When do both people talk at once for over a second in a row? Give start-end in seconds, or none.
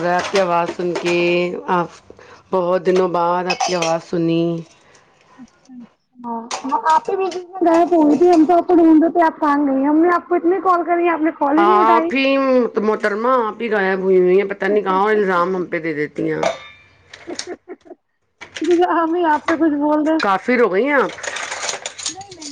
none